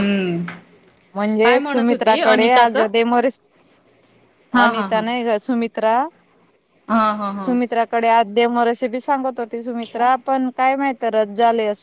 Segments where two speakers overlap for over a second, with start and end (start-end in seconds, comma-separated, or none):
1.4-2.9